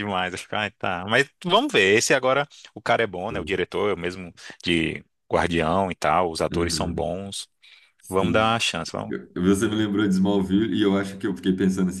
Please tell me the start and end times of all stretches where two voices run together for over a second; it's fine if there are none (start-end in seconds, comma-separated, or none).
none